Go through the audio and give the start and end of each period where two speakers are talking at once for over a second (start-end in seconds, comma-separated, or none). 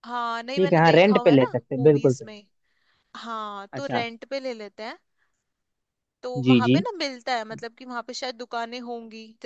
0.6-2.3